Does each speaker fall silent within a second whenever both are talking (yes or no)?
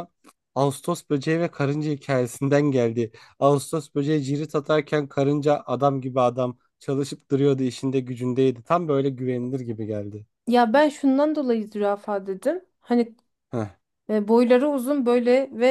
yes